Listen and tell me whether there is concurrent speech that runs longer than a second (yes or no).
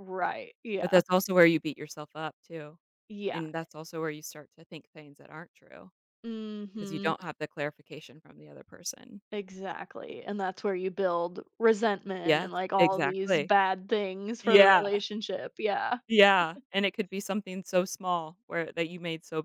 yes